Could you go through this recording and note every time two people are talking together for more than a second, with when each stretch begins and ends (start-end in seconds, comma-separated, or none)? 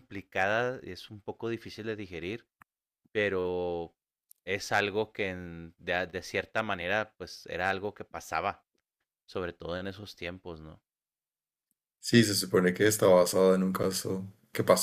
none